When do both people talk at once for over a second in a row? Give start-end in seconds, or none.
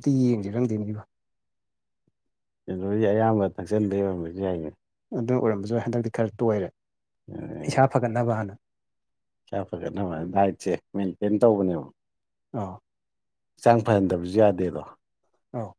none